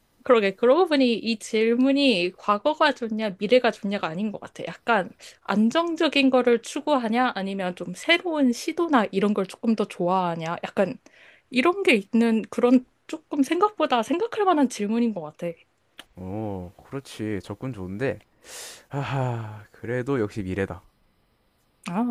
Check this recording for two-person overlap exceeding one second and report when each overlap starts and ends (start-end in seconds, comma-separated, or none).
none